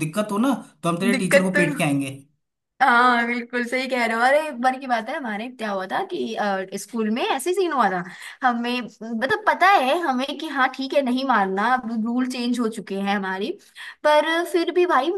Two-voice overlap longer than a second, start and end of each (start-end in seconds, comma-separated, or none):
none